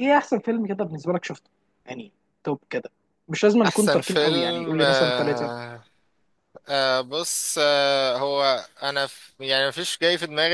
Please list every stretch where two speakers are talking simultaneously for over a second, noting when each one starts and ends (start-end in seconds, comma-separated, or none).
3.6-5.5